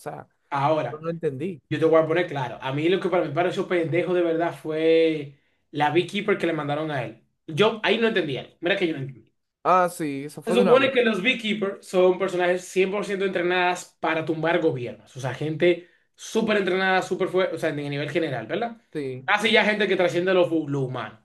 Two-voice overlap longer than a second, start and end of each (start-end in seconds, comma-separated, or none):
none